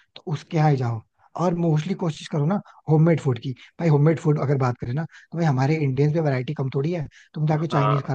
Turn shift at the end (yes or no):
no